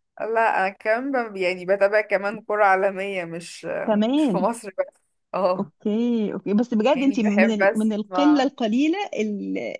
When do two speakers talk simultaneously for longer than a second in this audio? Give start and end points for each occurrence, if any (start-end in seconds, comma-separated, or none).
6.9-8.5